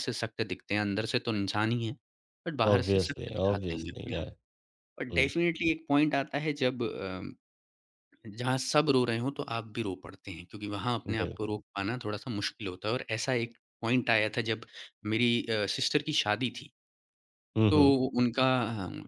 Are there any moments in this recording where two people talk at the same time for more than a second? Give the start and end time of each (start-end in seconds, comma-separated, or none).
2.7-4.2